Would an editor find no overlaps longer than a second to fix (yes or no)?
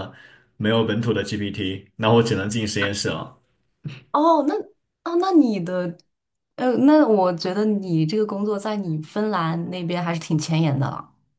yes